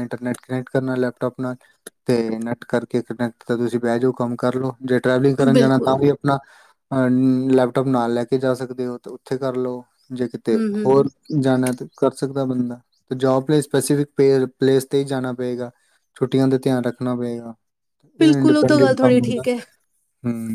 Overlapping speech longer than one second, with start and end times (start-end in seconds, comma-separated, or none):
18.2-19.4